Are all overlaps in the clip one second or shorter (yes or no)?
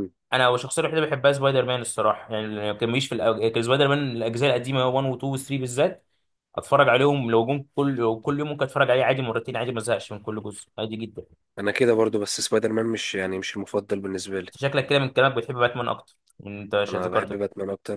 yes